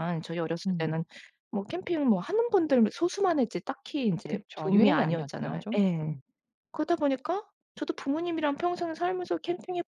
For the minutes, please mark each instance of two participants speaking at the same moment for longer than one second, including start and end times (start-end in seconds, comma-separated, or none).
4.3-6.2